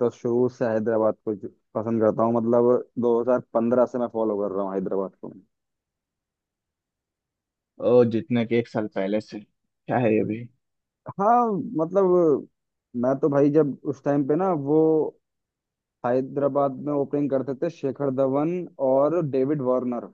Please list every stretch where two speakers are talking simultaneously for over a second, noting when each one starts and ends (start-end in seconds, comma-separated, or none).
none